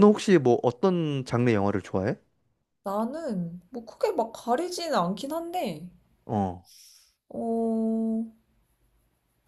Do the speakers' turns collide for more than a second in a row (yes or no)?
no